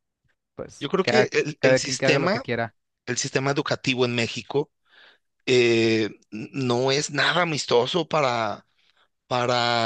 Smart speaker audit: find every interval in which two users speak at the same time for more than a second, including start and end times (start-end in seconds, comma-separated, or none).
0.8-2.4